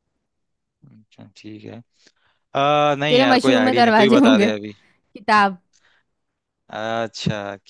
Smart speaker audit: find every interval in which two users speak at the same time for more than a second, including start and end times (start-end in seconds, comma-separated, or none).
3.1-4.5